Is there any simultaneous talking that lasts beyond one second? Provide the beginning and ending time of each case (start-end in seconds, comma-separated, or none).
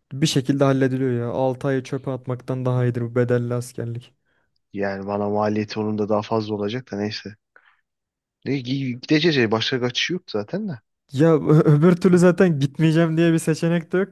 none